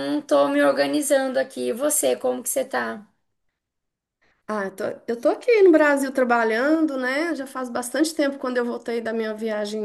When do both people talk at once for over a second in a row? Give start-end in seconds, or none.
none